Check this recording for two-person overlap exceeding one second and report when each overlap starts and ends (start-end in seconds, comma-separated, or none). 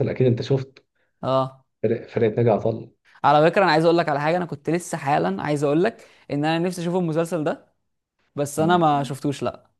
none